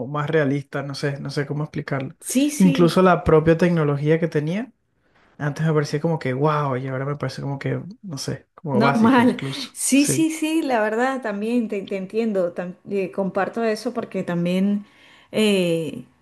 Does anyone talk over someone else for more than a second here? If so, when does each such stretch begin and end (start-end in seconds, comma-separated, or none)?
8.7-10.3